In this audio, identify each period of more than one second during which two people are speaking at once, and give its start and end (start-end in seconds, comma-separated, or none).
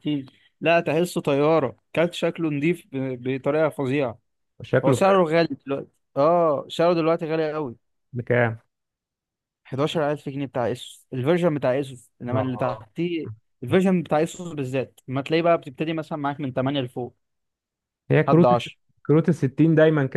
none